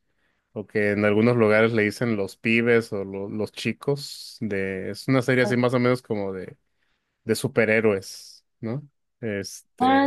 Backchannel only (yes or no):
no